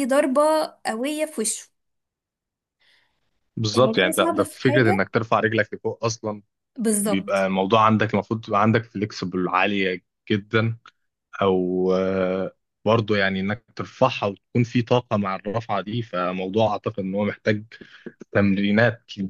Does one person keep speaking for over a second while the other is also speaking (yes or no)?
yes